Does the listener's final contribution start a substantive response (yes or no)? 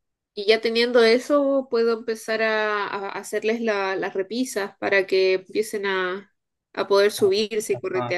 yes